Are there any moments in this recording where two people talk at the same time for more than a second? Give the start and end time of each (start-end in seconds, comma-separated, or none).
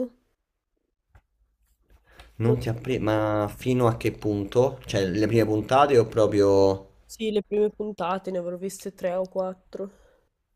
none